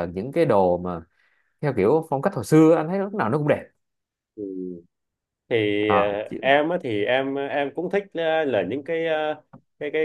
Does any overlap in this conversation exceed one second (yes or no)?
no